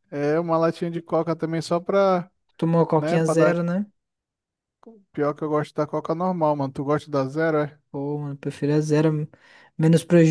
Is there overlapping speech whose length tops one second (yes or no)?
no